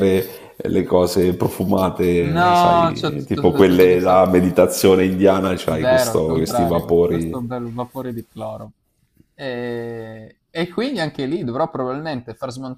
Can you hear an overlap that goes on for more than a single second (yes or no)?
yes